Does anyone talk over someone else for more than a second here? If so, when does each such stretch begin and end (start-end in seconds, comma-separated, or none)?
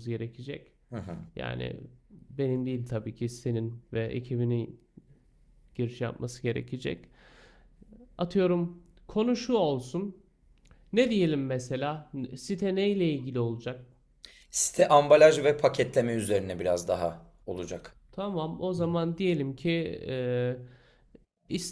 none